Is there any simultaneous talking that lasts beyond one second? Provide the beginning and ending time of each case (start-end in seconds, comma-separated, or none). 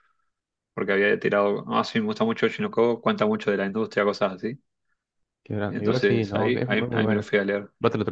5.7-7.3